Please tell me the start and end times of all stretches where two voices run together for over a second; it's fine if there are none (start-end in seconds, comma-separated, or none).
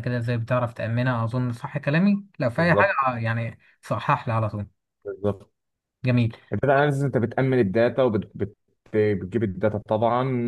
none